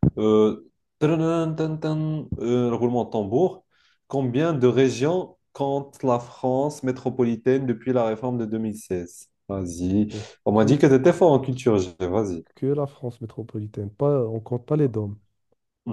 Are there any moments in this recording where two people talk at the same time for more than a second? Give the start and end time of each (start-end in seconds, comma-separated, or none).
none